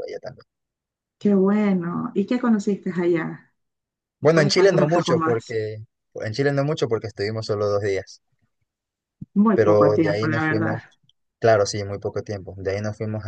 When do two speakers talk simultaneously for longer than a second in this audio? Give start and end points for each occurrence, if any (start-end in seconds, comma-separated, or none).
4.2-5.6, 9.5-10.8